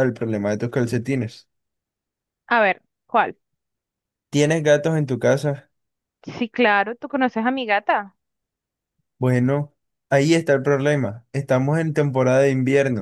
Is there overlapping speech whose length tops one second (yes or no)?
no